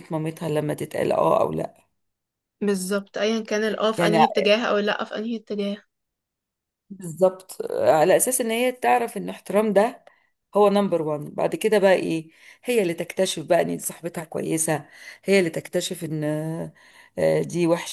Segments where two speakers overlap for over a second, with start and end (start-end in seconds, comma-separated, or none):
none